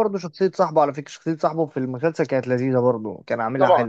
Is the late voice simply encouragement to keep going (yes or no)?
yes